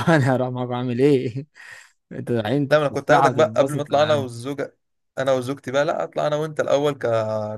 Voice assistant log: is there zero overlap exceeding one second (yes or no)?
no